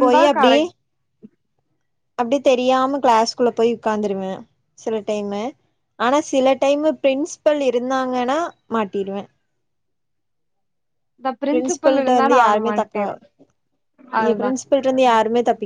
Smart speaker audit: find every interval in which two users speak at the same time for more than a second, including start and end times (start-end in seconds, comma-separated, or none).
11.5-13.0